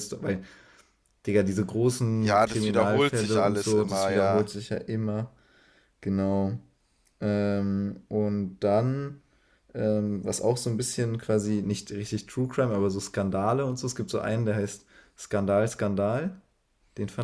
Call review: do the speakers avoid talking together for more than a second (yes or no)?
no